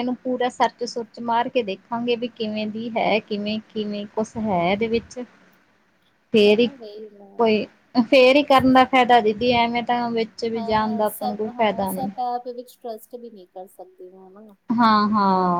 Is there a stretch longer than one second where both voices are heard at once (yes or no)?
yes